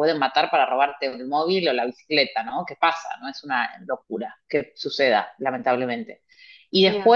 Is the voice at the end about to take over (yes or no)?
no